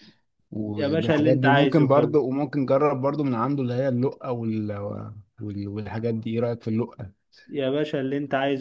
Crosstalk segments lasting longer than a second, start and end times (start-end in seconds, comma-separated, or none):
0.8-2.2